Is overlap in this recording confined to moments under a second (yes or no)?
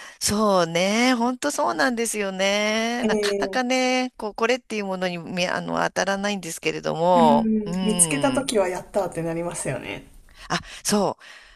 no